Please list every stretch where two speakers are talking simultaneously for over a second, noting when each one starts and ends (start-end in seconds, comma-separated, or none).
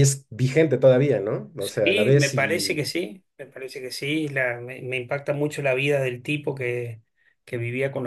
1.6-2.8